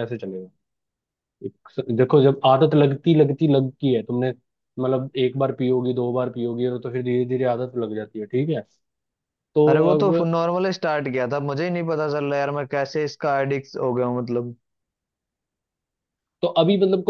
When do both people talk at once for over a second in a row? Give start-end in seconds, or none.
none